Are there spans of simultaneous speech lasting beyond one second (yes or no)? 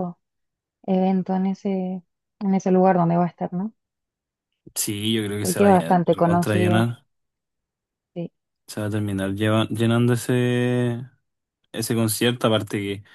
yes